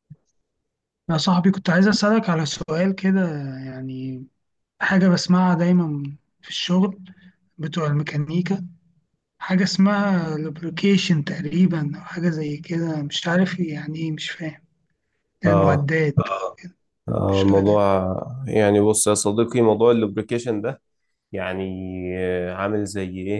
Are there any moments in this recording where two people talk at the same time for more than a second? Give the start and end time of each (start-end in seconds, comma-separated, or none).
none